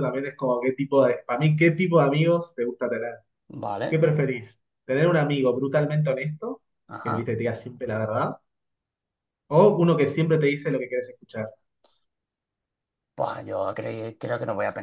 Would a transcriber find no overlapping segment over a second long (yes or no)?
yes